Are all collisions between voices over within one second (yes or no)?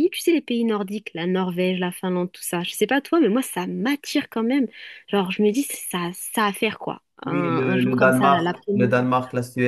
no